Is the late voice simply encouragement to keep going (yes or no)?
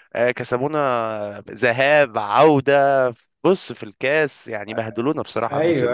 no